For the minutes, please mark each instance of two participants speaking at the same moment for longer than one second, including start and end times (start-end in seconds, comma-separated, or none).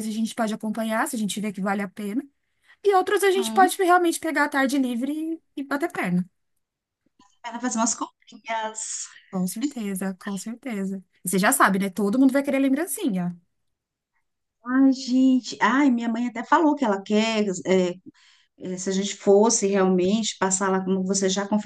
none